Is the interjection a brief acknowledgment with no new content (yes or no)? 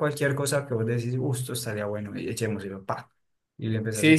no